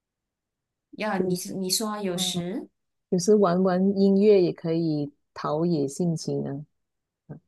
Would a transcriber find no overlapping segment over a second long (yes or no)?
yes